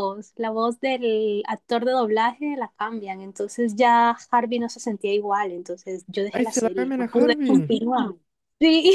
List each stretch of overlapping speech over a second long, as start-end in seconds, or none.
6.3-7.8